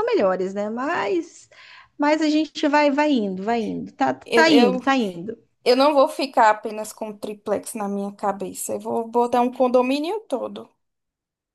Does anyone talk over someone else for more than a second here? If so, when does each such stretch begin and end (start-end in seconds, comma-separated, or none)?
none